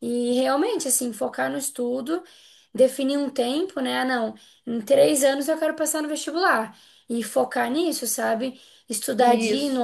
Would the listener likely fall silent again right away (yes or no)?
yes